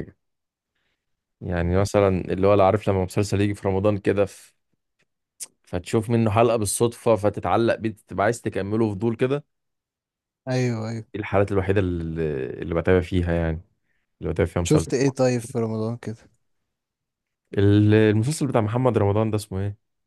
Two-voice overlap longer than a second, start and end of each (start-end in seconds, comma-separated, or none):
none